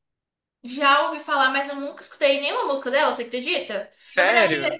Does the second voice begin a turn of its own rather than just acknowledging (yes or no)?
no